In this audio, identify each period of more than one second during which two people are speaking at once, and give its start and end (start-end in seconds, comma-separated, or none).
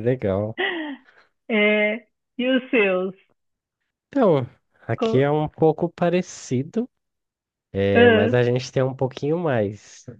none